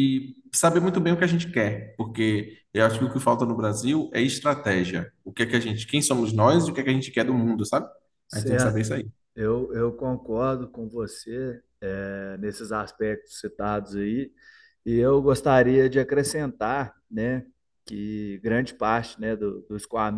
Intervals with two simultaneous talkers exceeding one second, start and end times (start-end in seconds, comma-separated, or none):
none